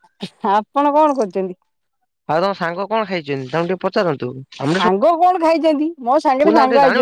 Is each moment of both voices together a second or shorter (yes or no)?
yes